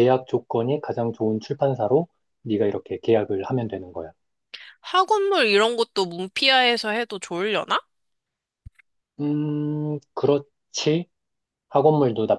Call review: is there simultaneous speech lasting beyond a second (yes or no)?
no